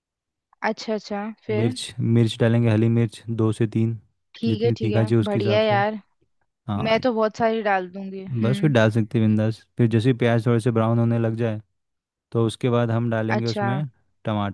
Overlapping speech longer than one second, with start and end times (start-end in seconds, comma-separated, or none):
4.5-5.8